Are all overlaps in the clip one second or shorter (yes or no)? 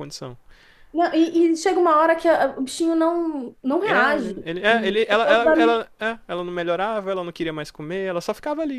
no